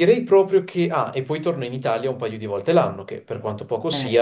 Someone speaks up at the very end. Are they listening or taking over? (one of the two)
listening